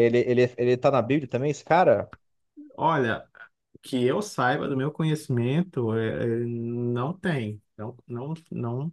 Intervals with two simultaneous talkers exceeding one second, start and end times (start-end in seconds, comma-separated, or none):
none